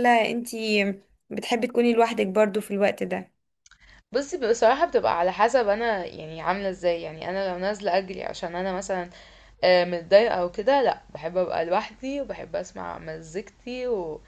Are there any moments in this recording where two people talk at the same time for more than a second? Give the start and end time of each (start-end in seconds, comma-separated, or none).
none